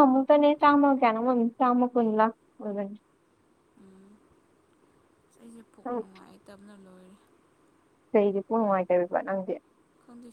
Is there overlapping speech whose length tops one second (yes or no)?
no